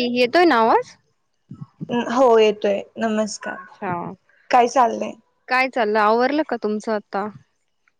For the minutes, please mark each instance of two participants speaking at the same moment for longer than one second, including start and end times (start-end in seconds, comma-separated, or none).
none